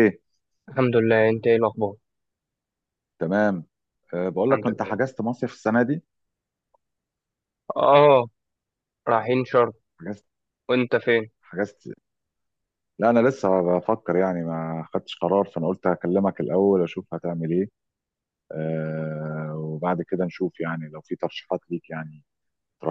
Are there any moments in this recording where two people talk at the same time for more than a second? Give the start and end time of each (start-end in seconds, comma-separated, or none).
none